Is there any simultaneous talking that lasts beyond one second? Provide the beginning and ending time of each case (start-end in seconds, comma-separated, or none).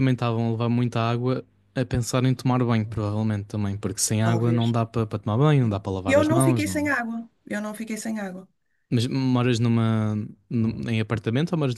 5.6-6.9